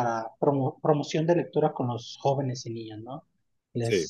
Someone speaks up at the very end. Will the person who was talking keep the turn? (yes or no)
yes